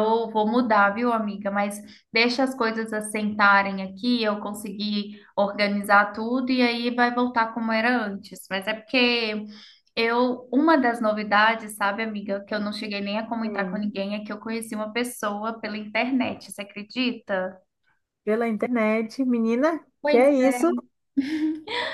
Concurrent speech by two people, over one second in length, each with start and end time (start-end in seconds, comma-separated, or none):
none